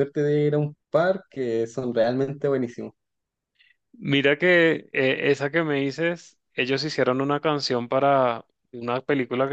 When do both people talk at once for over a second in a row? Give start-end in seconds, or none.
none